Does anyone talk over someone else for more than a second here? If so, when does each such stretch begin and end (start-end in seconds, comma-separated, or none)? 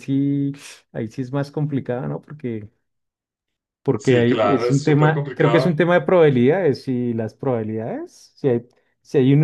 4.0-5.8